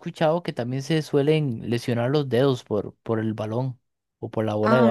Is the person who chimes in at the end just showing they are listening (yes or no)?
no